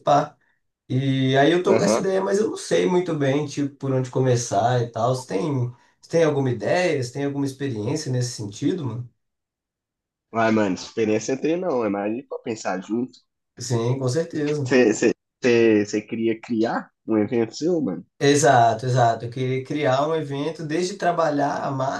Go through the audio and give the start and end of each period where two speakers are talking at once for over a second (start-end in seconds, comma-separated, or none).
none